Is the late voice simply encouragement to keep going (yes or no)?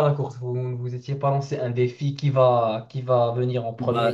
no